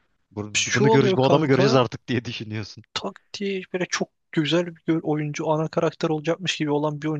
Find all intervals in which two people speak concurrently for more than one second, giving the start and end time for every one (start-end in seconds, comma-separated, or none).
0.6-1.8